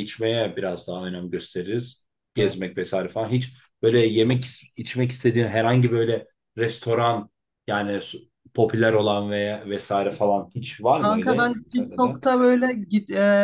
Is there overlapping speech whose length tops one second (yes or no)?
yes